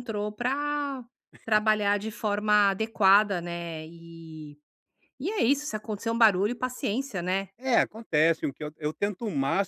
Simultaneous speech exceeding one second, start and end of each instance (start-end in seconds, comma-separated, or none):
none